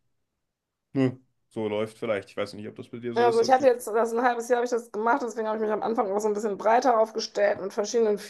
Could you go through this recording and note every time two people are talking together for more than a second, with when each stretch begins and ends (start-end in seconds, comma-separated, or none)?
none